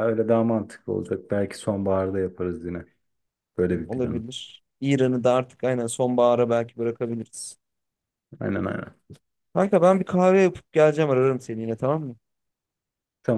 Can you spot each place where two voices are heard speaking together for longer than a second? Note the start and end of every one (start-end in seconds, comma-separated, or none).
none